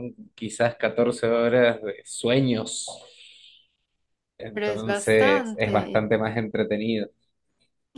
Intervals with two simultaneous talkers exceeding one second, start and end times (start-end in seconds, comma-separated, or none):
4.5-6.1